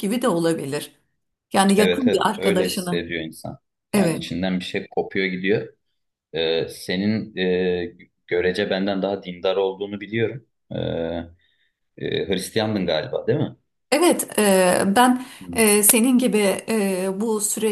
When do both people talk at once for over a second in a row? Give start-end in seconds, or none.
1.8-3.1